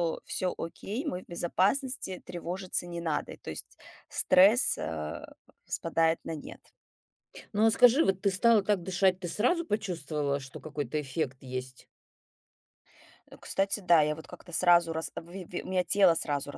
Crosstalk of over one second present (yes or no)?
no